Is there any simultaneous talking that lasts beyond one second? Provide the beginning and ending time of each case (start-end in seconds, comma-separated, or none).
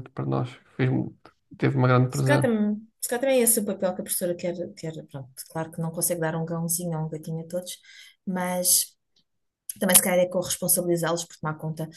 none